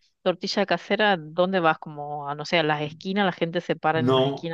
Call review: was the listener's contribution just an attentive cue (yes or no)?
no